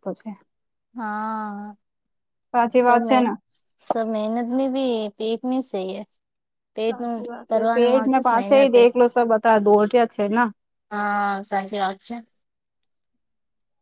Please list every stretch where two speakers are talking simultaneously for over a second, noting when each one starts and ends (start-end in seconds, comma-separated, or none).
6.9-8.8